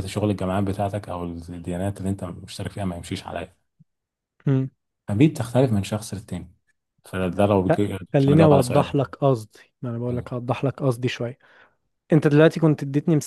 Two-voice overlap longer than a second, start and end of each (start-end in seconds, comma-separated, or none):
7.7-9.2